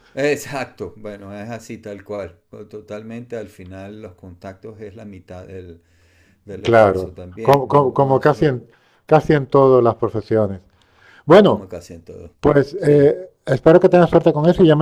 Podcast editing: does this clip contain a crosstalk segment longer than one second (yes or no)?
yes